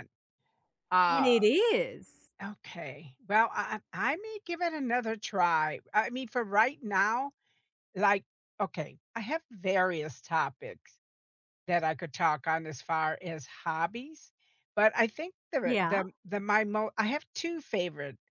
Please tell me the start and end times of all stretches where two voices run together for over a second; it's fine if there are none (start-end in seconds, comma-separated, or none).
none